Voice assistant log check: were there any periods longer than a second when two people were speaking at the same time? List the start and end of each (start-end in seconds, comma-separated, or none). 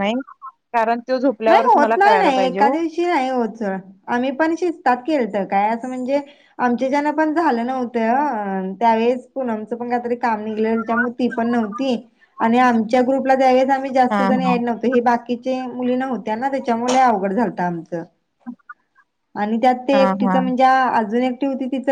1.5-2.8